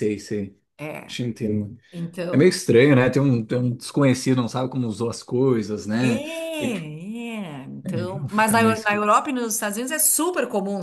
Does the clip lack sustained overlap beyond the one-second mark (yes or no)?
no